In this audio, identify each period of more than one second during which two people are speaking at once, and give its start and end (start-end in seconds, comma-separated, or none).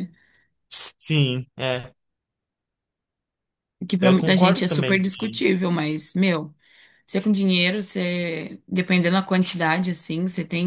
4.0-5.4